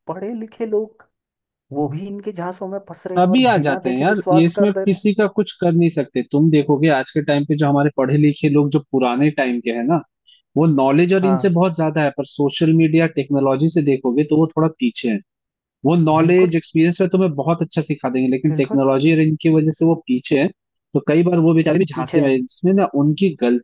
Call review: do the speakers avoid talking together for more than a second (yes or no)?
no